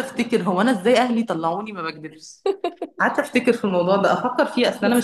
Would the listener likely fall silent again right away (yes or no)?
yes